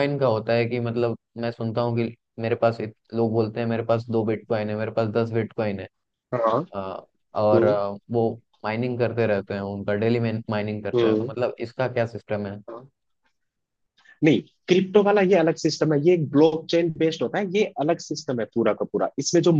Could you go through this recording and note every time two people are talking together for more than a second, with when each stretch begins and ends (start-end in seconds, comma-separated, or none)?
none